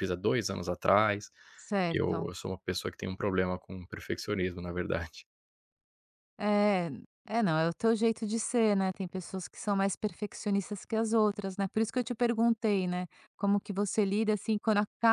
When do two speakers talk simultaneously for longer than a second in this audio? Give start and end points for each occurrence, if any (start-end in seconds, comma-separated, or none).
none